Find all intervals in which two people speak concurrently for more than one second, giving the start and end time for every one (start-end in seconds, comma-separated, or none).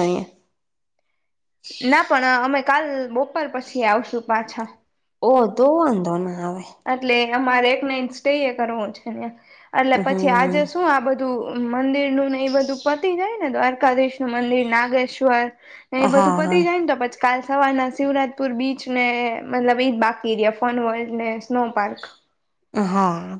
none